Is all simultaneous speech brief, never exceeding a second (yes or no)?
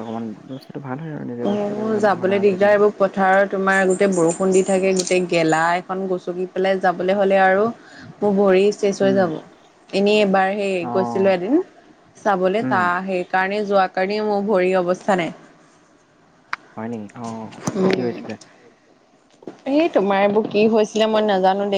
no